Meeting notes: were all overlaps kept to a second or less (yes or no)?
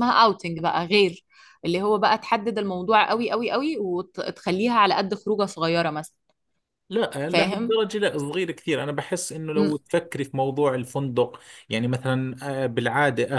yes